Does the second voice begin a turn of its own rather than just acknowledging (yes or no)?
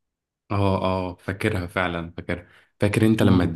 no